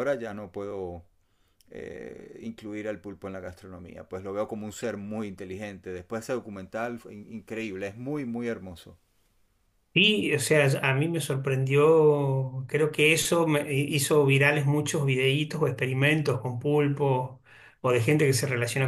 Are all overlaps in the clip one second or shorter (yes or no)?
yes